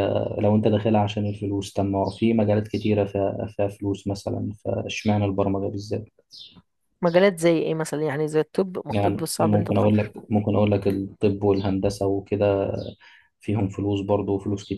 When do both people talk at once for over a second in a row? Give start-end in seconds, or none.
8.9-10.1